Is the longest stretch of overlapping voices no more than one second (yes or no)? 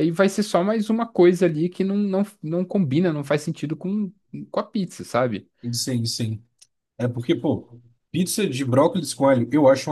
yes